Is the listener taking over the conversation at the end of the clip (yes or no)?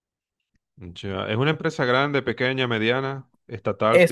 yes